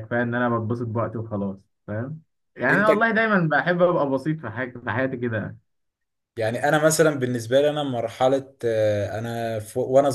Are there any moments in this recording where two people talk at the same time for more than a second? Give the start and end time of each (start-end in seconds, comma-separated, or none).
none